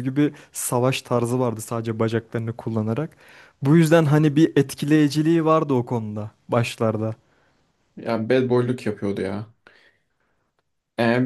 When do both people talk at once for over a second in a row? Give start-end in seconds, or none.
none